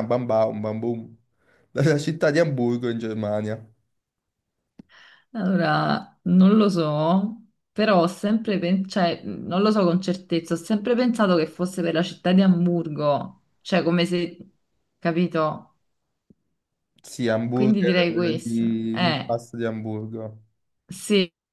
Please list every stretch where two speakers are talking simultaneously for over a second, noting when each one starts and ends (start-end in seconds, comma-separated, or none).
17.5-19.4